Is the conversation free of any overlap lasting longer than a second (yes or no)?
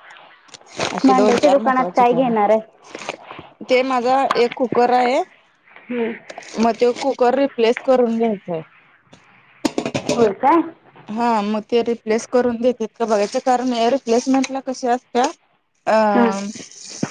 no